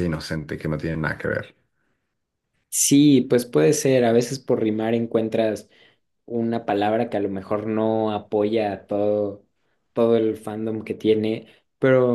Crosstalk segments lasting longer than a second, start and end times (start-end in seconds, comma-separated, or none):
none